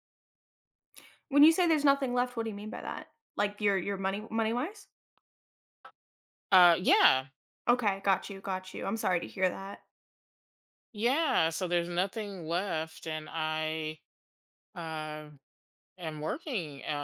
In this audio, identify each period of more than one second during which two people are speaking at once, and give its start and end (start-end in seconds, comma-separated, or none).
none